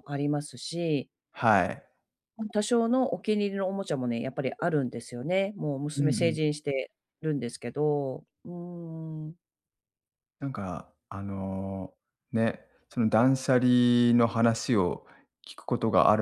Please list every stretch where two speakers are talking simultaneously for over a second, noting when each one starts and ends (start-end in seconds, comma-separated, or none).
none